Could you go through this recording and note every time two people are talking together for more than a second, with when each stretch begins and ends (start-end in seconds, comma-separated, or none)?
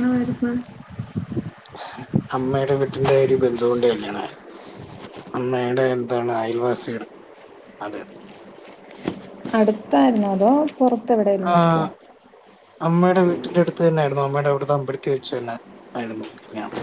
none